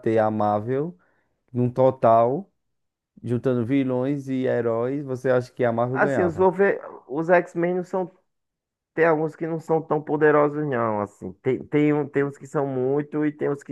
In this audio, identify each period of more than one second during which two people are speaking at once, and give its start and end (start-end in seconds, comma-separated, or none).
none